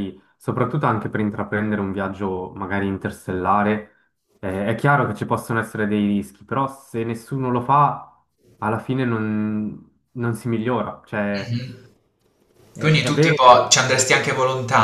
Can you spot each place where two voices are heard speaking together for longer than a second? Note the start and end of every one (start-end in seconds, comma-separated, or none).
12.8-14.0